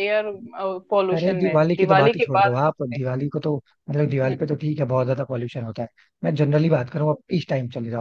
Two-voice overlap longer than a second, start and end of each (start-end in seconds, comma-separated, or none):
1.1-2.5